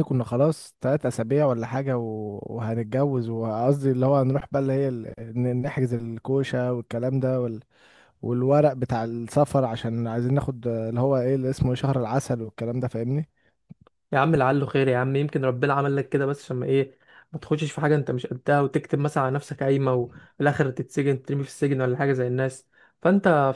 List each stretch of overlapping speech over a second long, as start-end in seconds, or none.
none